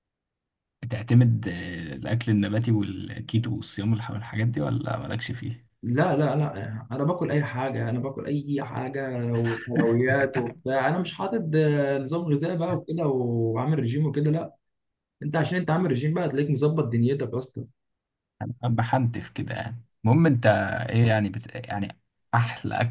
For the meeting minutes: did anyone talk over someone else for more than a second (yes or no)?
no